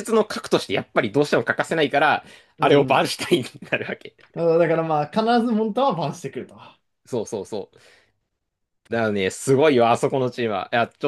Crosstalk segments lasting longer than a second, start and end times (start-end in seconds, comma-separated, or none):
none